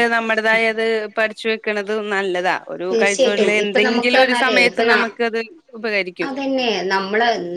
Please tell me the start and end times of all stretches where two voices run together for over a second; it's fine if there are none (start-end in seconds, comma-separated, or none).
2.9-4.9